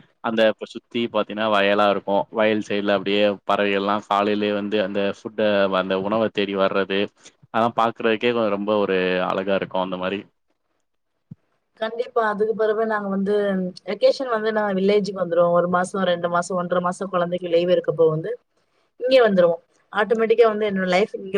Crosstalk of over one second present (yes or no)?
no